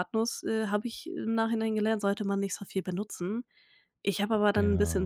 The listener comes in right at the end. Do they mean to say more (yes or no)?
no